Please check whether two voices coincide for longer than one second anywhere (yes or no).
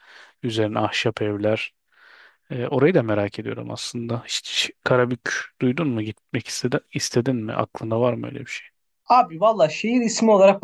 no